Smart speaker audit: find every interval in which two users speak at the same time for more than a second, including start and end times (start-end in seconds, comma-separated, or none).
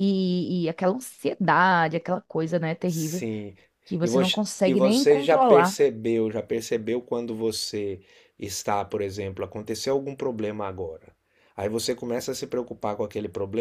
4.0-5.8